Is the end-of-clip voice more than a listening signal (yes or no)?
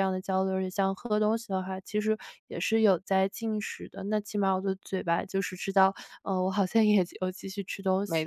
yes